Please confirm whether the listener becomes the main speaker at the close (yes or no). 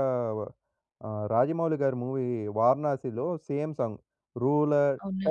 no